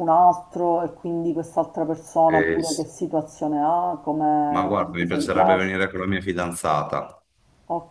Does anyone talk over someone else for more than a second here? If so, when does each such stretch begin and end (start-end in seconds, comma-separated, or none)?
4.5-5.8